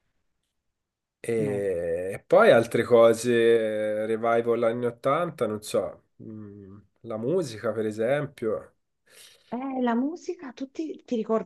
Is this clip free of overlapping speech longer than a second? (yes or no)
yes